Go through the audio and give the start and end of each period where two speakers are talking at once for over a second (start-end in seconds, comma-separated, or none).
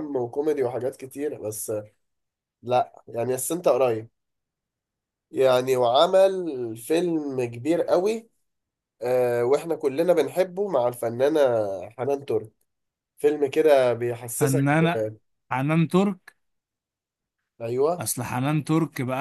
none